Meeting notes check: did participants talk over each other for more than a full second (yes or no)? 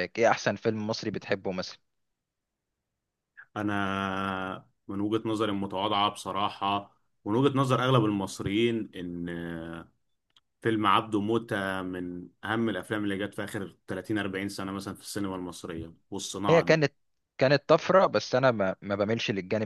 no